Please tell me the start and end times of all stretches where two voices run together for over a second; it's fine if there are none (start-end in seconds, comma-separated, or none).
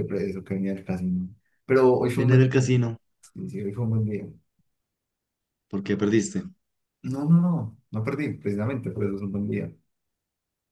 none